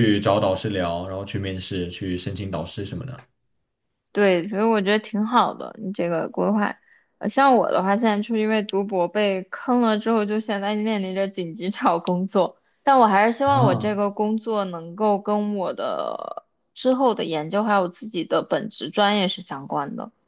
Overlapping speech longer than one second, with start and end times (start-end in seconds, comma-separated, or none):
none